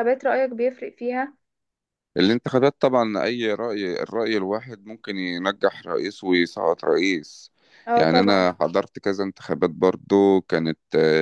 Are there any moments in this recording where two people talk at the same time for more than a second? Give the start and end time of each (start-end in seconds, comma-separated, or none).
none